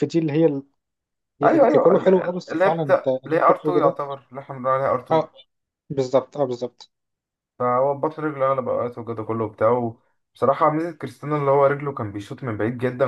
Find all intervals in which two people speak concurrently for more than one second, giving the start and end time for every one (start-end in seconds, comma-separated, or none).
1.4-4.0